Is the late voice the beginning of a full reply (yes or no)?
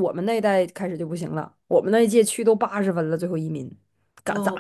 yes